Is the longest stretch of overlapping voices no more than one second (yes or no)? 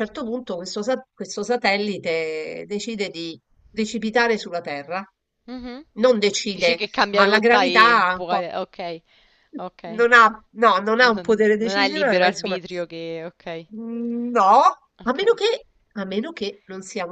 no